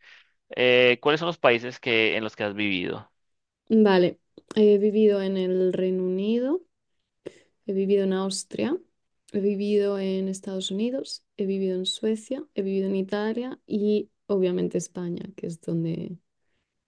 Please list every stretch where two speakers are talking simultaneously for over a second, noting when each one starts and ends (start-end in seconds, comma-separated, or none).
none